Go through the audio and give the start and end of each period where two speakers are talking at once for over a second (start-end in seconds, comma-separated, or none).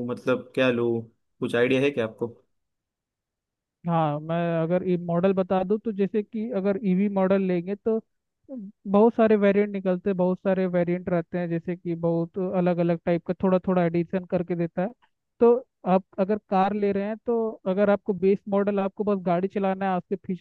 none